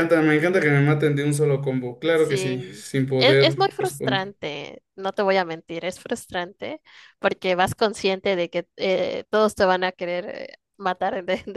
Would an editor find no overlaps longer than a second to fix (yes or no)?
no